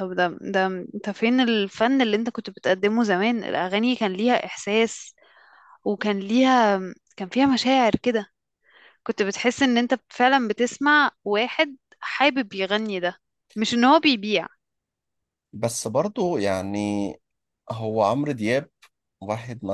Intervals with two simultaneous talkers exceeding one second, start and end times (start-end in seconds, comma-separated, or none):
none